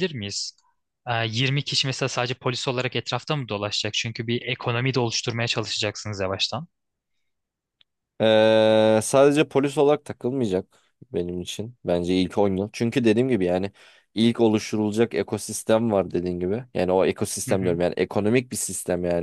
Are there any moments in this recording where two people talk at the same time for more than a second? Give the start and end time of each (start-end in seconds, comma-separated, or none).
none